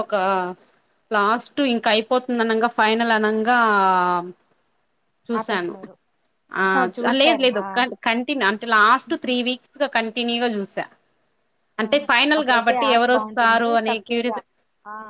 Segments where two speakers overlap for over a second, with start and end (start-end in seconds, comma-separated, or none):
11.9-14.3